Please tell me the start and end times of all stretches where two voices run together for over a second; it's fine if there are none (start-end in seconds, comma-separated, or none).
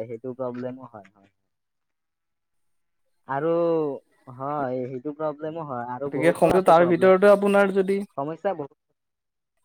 6.0-8.0